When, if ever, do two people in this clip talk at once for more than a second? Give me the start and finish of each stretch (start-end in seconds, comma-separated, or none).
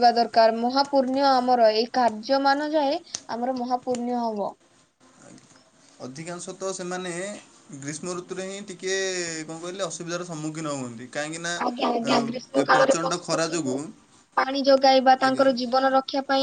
11.7-13.8